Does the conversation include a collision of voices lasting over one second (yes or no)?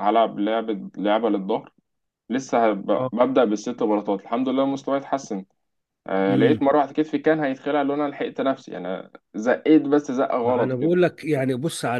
no